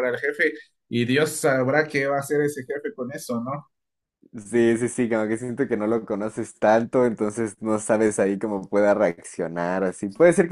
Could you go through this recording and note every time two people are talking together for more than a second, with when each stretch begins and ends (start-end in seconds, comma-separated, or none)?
none